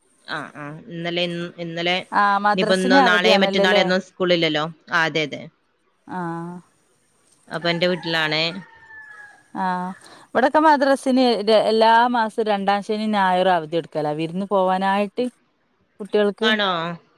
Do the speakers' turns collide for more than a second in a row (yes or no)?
yes